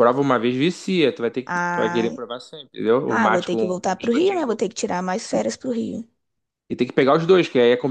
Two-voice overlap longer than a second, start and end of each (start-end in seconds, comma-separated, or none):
3.1-4.6